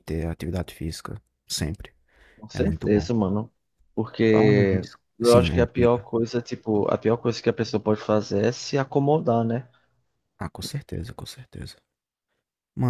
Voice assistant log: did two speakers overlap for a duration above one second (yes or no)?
yes